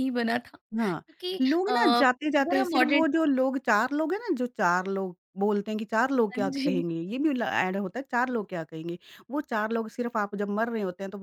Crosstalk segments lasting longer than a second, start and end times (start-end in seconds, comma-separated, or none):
1.4-3.0